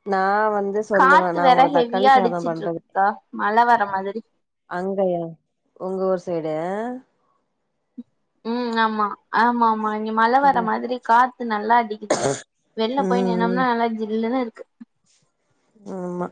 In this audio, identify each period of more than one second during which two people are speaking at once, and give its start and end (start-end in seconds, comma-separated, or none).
1.0-2.8